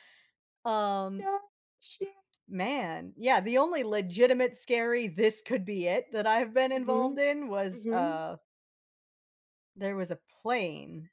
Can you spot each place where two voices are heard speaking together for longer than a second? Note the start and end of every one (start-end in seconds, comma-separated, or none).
none